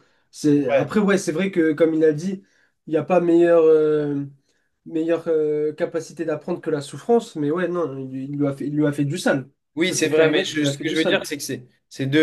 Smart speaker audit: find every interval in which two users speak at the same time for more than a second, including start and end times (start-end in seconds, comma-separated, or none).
9.8-11.2